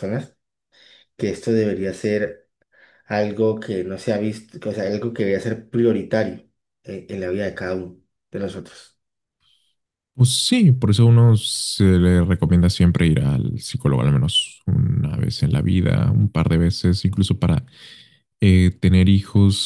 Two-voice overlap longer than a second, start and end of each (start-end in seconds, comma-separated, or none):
none